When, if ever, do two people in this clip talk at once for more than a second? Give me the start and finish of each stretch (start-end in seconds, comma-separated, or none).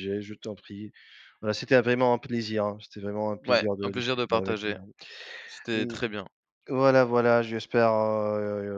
3.5-4.7